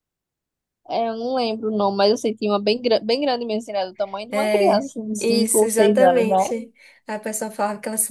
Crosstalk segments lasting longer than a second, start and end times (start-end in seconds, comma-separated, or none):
4.3-6.5